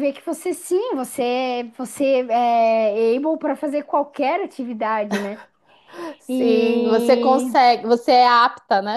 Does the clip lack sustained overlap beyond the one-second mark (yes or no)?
no